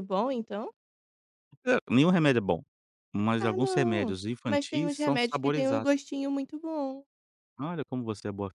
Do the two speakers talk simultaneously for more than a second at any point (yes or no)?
yes